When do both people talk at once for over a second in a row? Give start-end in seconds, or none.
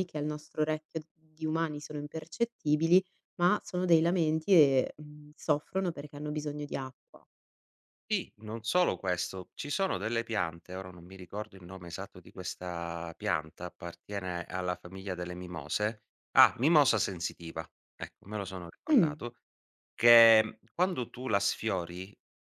none